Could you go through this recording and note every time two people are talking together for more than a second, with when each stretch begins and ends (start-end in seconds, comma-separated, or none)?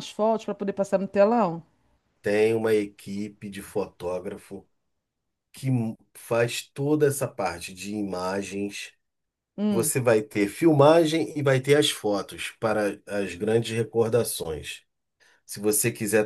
none